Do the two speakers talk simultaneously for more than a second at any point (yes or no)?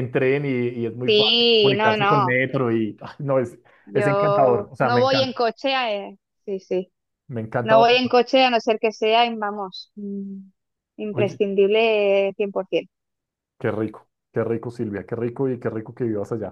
yes